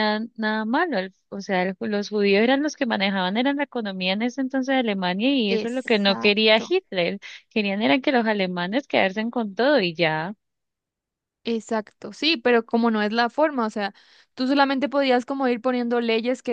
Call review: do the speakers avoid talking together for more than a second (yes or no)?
no